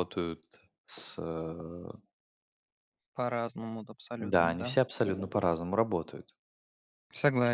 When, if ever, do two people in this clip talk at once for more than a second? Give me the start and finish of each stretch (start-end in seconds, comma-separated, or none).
none